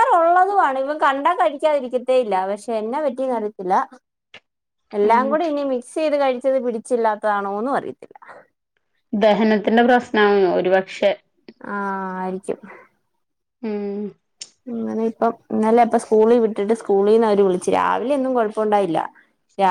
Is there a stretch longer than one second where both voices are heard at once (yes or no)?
no